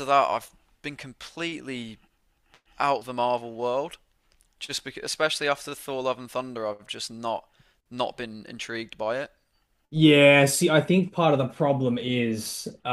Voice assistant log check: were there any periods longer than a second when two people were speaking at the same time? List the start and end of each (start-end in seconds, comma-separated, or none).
none